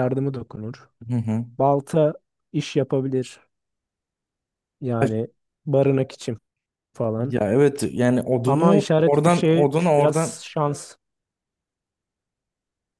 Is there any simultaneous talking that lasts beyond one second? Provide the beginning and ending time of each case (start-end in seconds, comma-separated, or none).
8.5-10.4